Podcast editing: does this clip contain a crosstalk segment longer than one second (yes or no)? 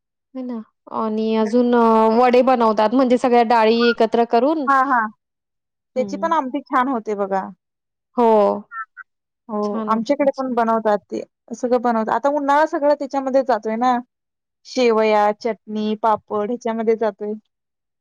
no